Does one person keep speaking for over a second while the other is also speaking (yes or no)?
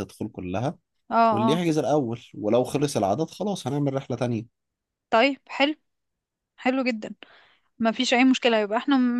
no